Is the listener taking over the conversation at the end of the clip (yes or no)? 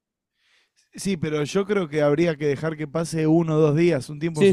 yes